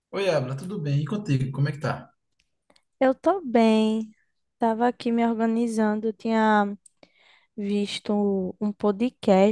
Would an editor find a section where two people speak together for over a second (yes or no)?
no